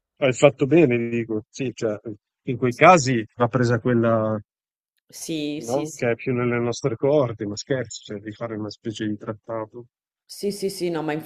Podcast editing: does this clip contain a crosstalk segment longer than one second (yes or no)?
no